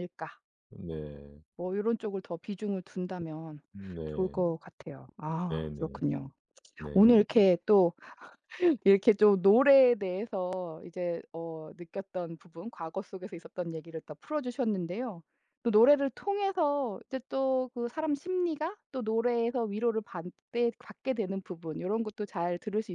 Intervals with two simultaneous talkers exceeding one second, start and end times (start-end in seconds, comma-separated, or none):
none